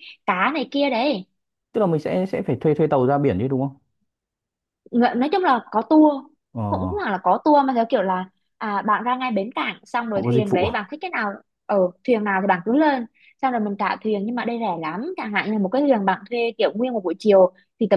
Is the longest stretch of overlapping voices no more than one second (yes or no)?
yes